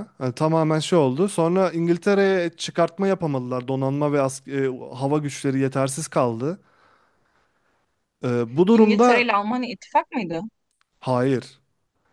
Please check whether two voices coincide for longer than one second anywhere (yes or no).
no